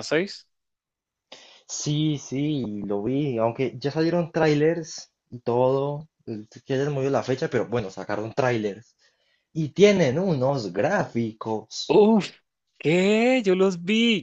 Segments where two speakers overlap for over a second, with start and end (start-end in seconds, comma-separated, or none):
none